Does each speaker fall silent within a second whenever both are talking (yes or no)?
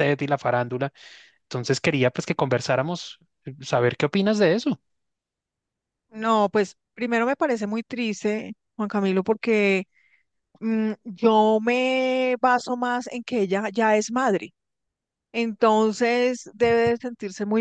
yes